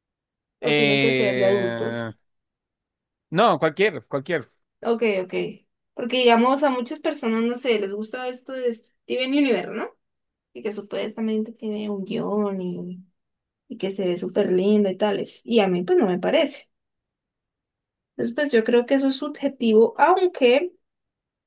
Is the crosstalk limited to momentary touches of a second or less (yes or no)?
no